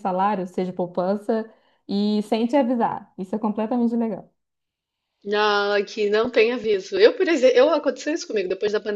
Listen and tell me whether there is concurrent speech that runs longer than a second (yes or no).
no